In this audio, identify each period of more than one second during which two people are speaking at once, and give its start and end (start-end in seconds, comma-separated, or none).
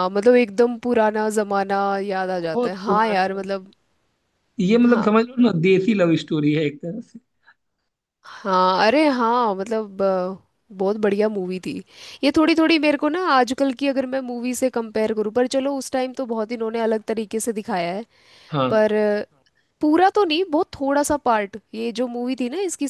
2.3-3.7